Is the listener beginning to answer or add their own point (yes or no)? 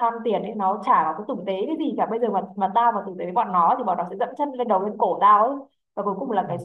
no